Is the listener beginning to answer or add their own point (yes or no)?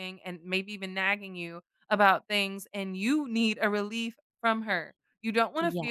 no